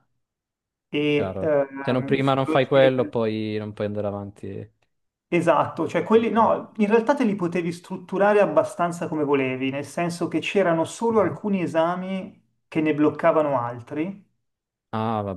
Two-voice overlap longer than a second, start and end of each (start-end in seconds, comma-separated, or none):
1.1-3.2